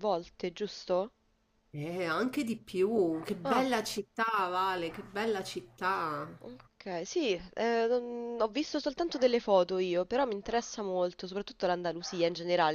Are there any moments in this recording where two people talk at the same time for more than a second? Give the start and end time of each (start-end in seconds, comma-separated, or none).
none